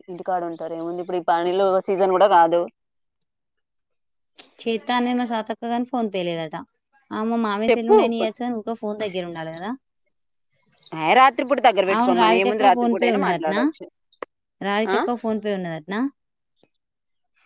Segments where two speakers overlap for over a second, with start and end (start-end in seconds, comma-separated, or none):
12.0-13.6